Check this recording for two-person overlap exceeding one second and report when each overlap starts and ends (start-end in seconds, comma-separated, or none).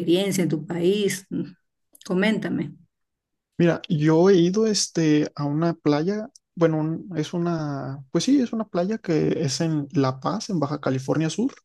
none